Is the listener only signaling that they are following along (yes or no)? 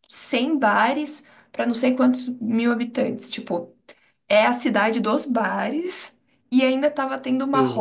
yes